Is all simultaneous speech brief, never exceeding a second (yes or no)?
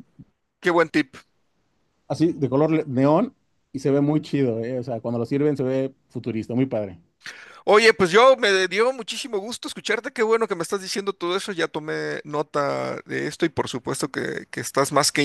yes